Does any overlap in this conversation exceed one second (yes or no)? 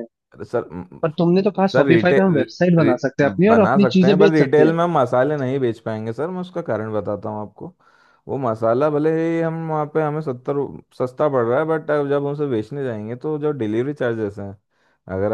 yes